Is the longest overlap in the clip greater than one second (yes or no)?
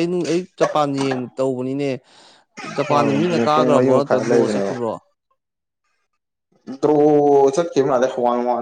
yes